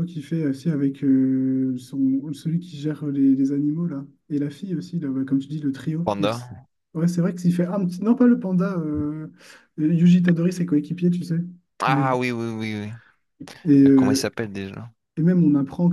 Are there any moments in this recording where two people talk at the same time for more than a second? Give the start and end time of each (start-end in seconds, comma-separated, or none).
none